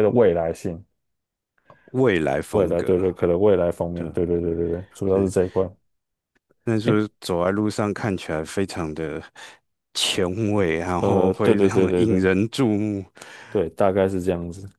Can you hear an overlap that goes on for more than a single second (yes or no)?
yes